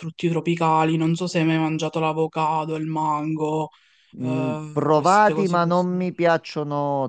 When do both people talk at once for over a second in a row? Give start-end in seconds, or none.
4.2-6.1